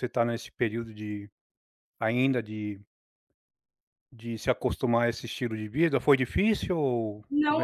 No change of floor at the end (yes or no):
no